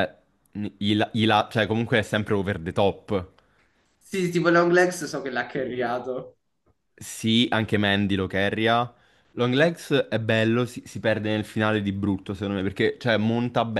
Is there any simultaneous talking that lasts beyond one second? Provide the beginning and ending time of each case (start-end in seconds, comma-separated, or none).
none